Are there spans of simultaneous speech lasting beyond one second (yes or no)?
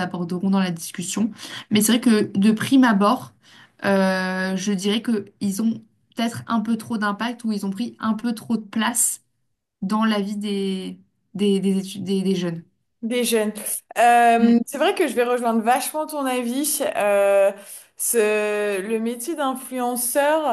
no